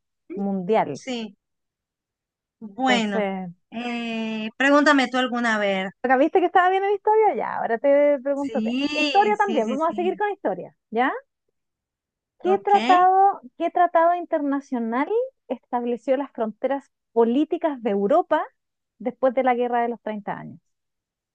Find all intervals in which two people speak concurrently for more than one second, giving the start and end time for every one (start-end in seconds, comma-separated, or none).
8.3-10.2